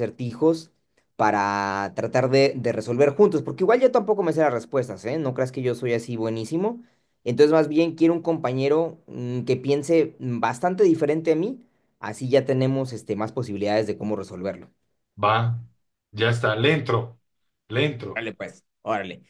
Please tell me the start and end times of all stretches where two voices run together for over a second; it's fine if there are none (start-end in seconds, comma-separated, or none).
none